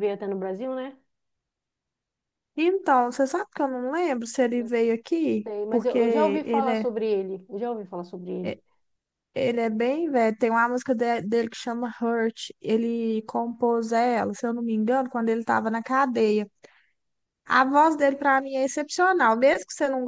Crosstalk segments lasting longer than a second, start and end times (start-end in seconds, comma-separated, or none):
5.4-6.9